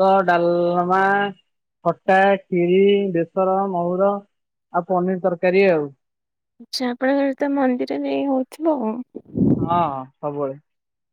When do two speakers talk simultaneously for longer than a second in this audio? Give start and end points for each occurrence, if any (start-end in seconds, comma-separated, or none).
none